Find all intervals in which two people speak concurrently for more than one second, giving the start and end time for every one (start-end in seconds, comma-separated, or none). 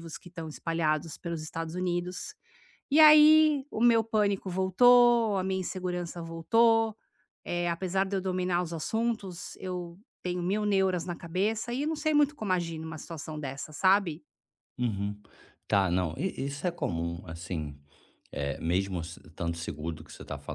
none